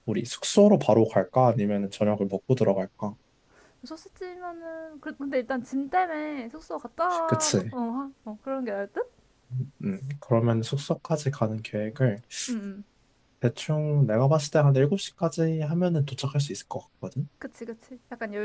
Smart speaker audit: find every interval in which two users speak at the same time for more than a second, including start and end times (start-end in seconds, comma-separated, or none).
none